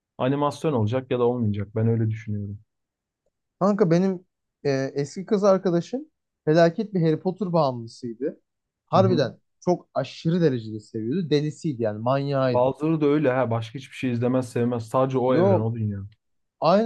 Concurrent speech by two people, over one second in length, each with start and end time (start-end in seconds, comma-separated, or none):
none